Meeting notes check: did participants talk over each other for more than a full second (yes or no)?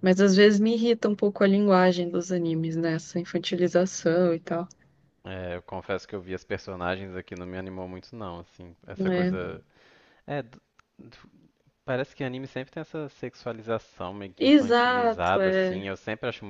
yes